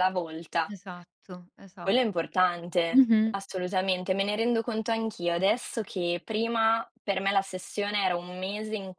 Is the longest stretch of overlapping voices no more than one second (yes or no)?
yes